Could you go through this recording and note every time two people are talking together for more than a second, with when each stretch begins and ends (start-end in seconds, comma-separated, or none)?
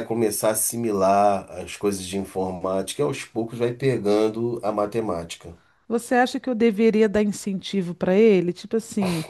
none